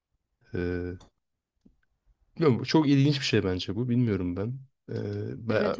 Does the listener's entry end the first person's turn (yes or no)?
no